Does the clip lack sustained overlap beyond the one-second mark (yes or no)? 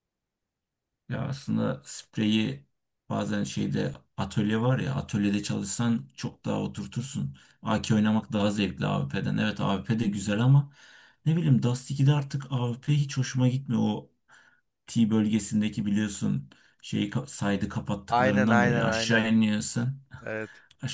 no